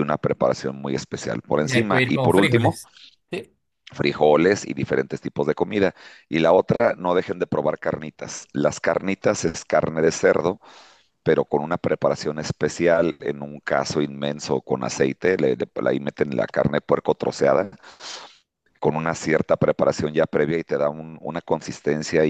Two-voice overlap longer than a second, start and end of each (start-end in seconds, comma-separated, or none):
1.6-2.8